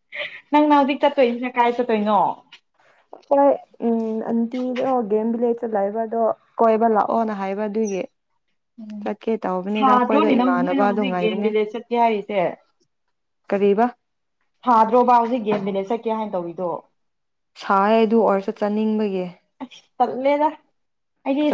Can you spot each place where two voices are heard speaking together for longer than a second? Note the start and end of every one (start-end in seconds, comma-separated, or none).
9.8-11.5